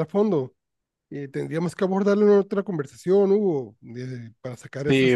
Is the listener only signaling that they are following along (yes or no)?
no